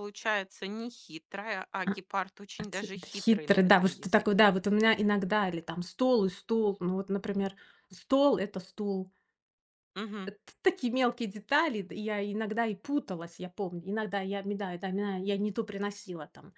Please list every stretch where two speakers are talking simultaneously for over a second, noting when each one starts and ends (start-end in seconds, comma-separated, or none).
2.6-4.5